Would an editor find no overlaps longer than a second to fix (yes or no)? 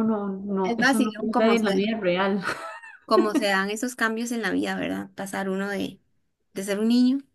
no